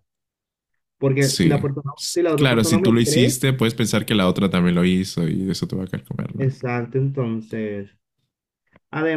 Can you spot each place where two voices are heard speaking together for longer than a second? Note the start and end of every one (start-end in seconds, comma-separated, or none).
1.2-3.4